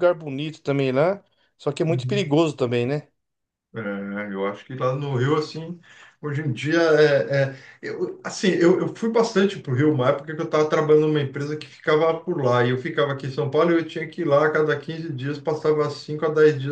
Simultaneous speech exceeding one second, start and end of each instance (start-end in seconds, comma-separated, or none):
none